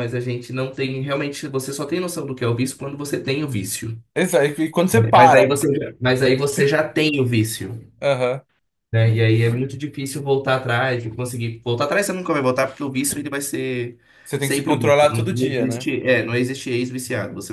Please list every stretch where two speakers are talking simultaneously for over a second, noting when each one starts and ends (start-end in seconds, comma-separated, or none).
14.4-15.9